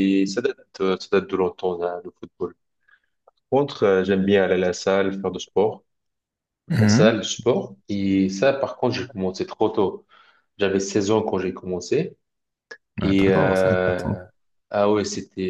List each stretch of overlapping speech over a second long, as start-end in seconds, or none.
13.0-14.2